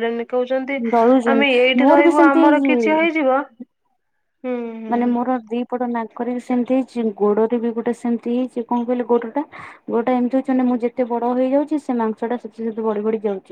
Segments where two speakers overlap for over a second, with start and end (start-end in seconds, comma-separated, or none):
1.4-3.1